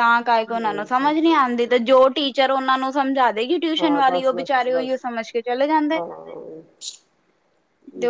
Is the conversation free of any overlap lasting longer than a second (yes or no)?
no